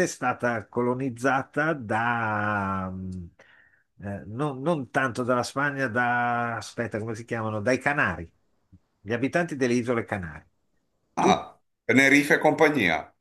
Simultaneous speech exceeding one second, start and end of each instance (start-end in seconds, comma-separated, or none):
none